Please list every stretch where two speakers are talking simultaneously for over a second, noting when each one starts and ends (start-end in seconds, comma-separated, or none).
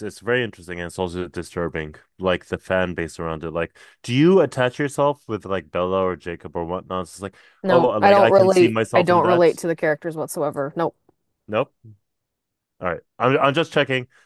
7.6-9.5